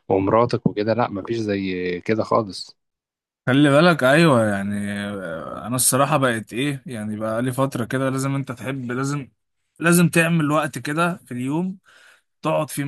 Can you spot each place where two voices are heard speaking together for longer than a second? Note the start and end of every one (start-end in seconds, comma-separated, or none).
none